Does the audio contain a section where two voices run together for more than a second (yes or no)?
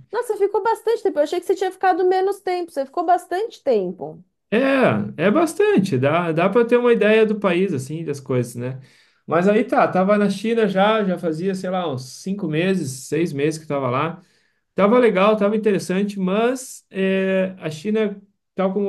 no